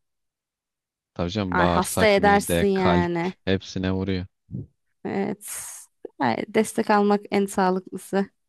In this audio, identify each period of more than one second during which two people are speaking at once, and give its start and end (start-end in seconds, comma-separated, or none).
1.5-3.3